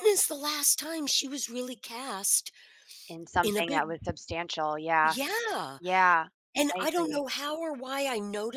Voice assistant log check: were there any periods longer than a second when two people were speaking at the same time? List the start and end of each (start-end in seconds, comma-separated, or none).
none